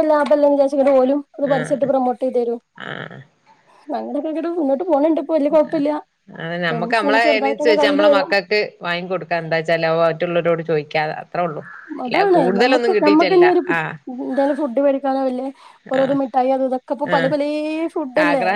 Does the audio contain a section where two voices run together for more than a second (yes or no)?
yes